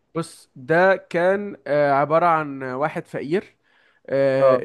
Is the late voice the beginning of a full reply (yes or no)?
no